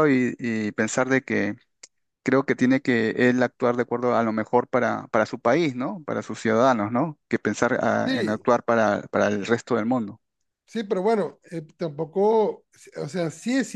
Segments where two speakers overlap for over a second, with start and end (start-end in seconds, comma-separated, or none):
none